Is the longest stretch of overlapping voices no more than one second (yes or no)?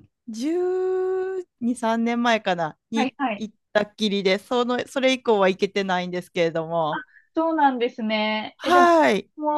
yes